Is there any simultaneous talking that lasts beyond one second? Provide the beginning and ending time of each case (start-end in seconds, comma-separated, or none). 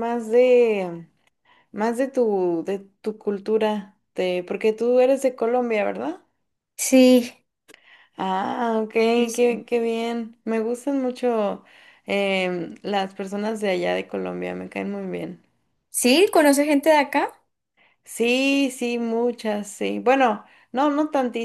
none